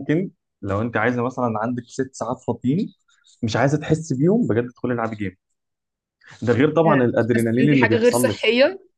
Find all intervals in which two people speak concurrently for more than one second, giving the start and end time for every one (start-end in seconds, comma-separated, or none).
6.9-8.4